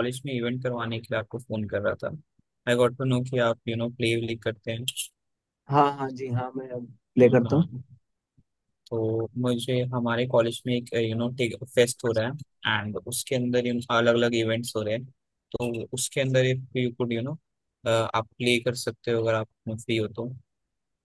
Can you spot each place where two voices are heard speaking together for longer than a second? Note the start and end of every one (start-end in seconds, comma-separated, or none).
none